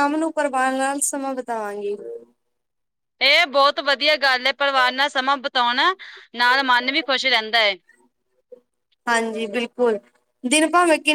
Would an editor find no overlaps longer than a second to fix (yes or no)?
yes